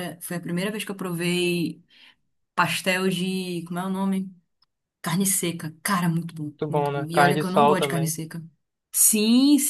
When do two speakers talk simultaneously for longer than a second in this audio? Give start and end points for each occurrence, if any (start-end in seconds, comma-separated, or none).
6.6-8.2